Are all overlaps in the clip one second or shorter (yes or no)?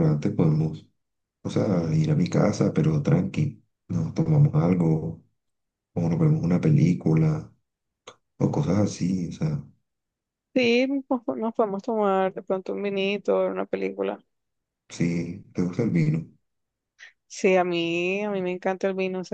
yes